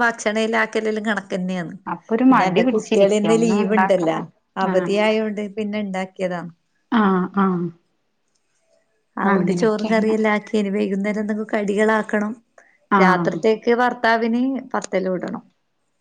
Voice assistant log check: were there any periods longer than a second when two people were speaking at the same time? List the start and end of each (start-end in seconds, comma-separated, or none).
2.3-4.2